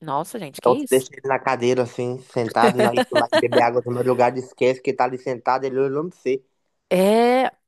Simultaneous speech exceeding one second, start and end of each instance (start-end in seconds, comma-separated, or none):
none